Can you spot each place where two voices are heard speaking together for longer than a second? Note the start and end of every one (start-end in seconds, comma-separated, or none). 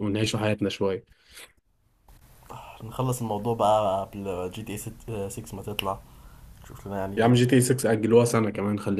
none